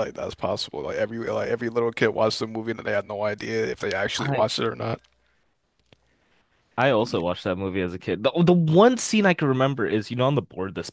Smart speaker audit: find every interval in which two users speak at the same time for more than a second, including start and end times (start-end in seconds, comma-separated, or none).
none